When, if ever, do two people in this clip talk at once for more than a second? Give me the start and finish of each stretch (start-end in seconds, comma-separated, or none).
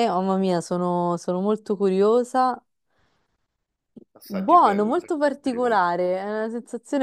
4.3-5.8